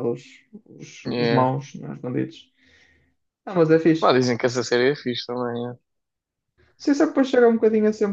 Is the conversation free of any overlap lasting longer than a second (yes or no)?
yes